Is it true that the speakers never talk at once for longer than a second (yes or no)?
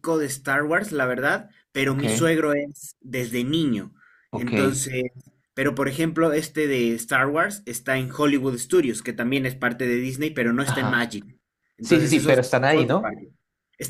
no